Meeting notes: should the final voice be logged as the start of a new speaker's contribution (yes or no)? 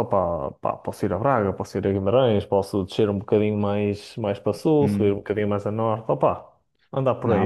yes